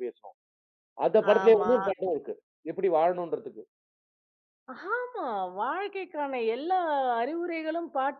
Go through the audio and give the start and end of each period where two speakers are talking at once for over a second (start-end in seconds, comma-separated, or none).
none